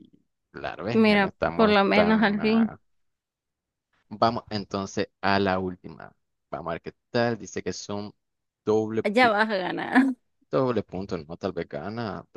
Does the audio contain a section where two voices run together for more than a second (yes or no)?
yes